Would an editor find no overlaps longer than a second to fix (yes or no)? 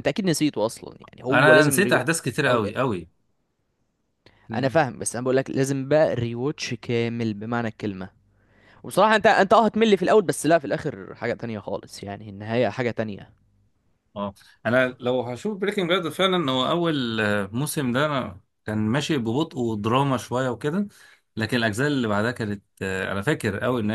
no